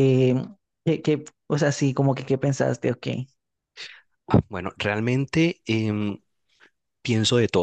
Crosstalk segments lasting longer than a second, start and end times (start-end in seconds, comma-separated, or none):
none